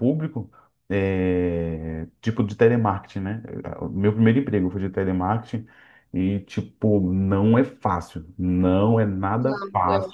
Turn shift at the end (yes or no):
no